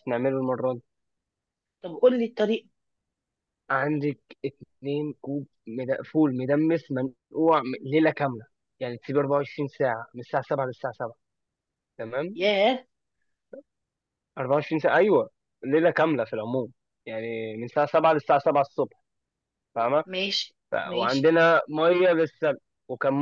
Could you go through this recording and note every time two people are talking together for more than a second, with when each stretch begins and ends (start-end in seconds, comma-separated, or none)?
none